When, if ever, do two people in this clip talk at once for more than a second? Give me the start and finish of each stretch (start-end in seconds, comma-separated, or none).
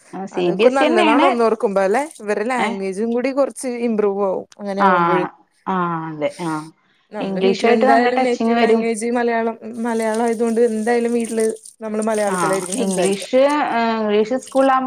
7.3-8.8